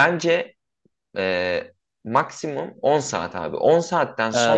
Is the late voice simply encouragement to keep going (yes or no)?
no